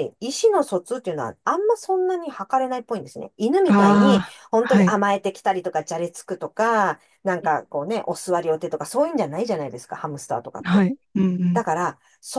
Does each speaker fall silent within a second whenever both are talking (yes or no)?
no